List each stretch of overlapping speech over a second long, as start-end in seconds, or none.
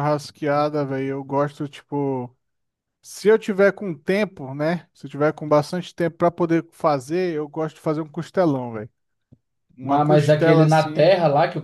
9.8-11.1